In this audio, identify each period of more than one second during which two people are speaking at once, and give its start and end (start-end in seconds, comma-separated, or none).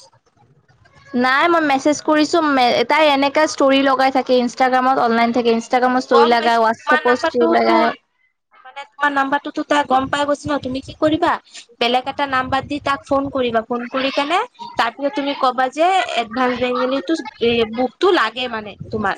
6.1-7.7